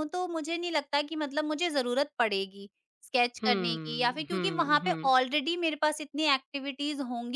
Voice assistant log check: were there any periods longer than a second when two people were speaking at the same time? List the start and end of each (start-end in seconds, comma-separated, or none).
3.4-5.1